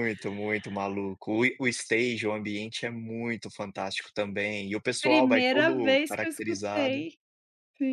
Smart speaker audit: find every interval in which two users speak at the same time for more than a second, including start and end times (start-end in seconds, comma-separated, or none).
5.0-7.0